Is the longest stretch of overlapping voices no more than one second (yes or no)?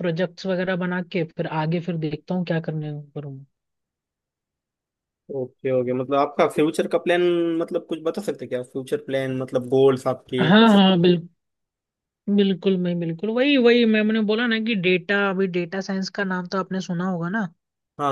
yes